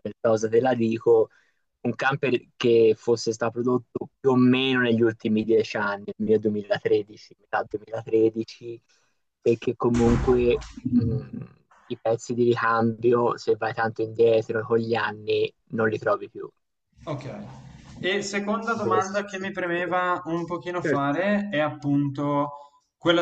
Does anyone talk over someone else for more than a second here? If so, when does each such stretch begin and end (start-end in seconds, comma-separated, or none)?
18.8-19.9